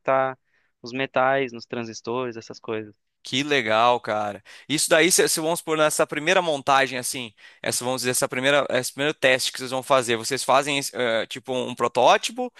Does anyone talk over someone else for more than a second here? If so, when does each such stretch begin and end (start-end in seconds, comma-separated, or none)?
none